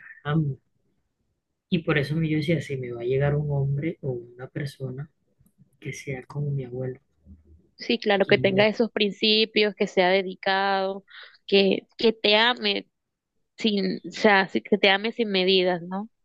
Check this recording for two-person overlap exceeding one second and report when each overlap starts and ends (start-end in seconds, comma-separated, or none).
none